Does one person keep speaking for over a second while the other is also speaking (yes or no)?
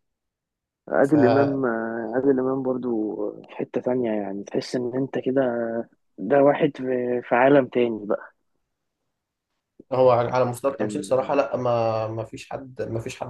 no